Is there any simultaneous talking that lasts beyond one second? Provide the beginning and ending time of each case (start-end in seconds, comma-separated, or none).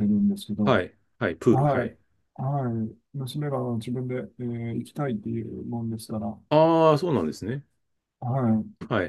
none